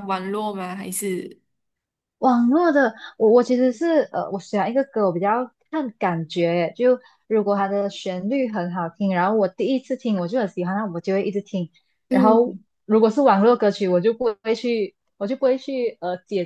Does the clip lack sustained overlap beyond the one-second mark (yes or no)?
yes